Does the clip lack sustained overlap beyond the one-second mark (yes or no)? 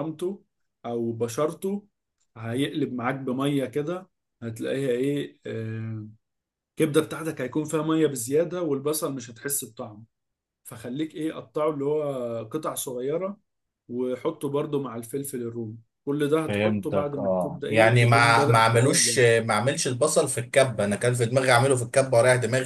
no